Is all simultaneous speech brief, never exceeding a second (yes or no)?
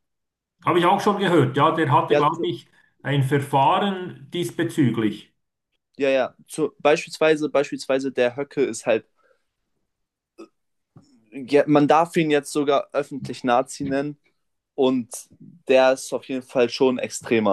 yes